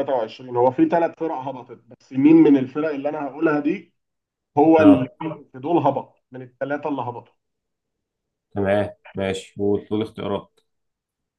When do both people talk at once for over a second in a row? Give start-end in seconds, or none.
none